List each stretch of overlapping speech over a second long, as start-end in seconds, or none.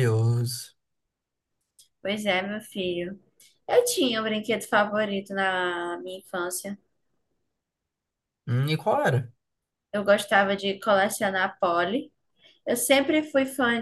none